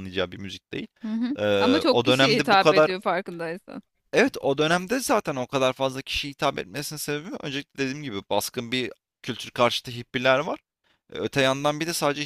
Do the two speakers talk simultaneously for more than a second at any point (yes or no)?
yes